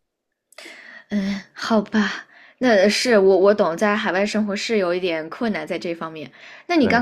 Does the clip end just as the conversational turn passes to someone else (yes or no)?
no